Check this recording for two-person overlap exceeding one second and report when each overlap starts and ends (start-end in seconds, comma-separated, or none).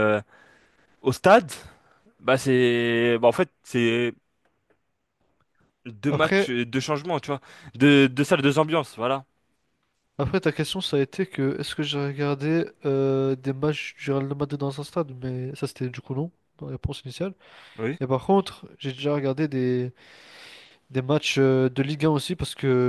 none